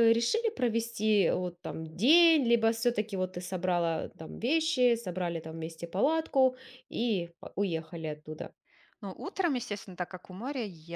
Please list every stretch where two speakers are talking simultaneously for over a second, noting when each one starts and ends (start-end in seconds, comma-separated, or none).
none